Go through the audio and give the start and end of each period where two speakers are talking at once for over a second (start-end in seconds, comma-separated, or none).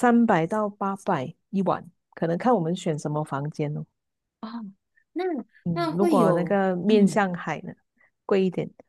5.7-7.2